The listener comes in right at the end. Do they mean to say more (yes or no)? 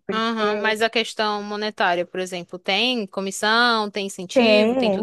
yes